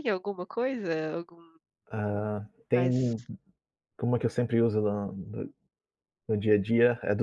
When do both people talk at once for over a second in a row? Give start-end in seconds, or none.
none